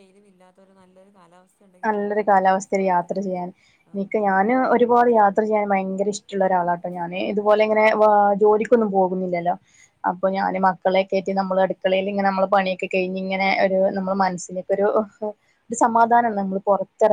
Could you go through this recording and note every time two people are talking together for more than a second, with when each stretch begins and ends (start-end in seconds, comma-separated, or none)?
none